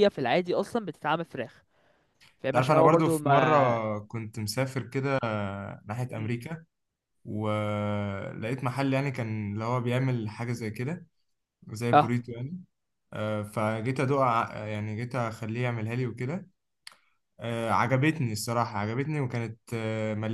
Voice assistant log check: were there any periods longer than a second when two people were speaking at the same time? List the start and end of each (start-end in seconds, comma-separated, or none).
2.5-3.8